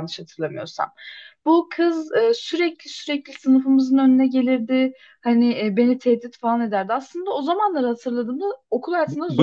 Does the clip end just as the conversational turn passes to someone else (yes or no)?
yes